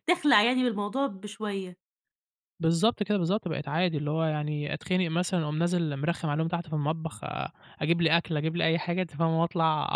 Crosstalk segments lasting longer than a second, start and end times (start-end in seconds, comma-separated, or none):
none